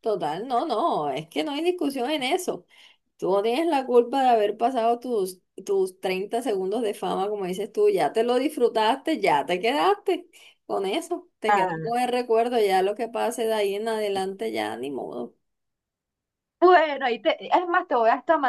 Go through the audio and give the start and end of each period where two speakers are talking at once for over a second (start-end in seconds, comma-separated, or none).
none